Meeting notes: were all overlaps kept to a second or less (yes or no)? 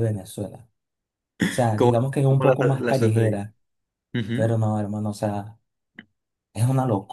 no